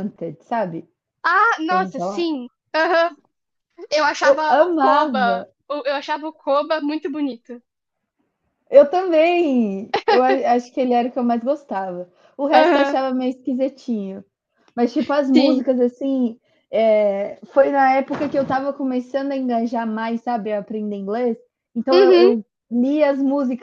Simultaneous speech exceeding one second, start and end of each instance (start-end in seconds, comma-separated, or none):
4.2-5.5